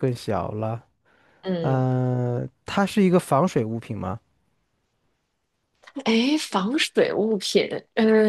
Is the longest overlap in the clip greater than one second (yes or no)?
no